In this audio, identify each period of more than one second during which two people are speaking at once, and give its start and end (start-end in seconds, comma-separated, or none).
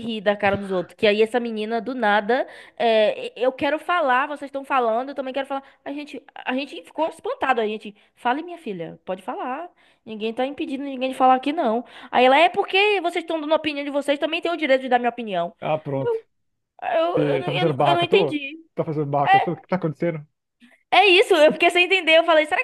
17.1-18.6